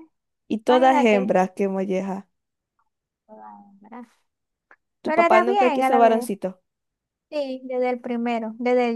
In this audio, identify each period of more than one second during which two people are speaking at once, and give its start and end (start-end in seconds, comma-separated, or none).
5.0-6.3